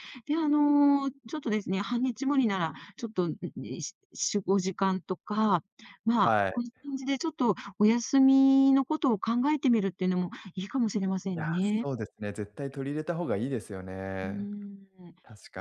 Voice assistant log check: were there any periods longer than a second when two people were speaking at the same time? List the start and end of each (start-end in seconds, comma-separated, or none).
none